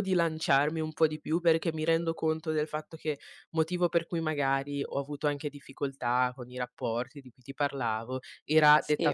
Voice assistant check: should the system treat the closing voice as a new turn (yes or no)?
no